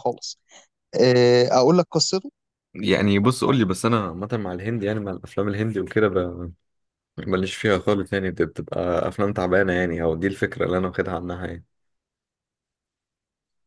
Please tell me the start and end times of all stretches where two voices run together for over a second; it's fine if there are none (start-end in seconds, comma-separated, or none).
none